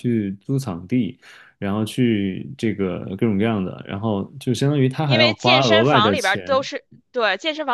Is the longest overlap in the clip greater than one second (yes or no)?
yes